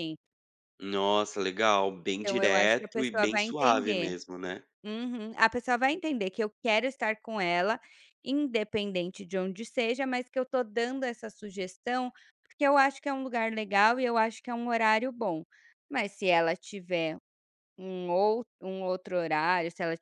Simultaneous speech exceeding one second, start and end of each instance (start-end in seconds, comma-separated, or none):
2.2-4.1